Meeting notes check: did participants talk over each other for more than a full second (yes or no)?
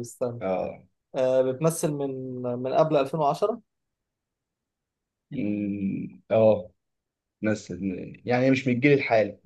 no